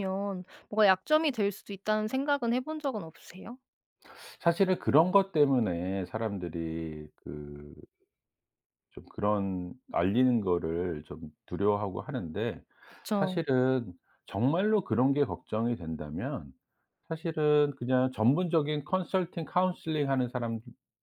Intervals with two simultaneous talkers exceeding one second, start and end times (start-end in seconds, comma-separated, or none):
none